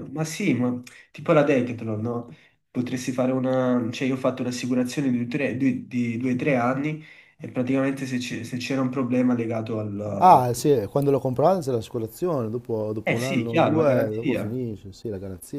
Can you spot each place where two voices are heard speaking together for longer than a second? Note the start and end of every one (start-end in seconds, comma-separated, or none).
13.0-14.6